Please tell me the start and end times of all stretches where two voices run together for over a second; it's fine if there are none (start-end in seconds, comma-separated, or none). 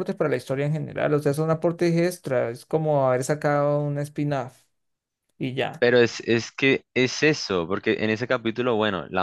none